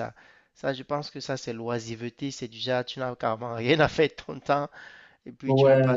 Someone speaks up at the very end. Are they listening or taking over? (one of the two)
listening